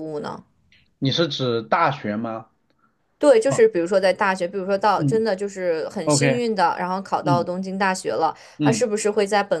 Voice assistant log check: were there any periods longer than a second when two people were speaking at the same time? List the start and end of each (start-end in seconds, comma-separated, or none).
none